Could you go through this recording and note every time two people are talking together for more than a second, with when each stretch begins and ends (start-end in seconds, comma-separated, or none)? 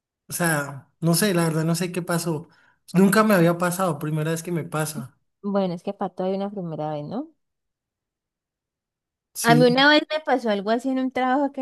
none